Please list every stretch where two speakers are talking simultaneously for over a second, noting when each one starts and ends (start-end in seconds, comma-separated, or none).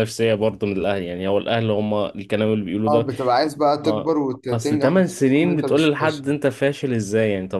3.8-6.2